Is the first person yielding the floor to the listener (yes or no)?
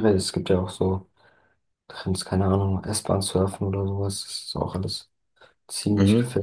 yes